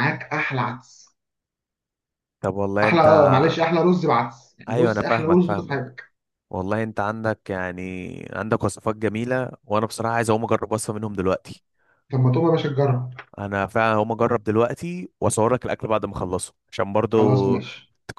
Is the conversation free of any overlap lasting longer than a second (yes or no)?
no